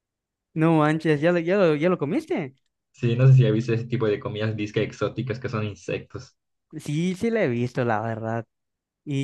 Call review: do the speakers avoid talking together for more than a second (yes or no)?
yes